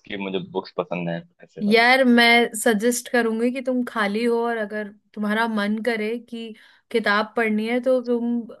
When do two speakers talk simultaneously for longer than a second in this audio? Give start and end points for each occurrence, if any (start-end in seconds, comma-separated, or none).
none